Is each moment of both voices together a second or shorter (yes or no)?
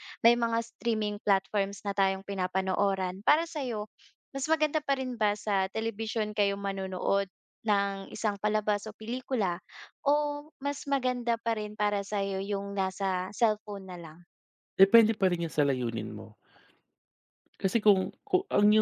yes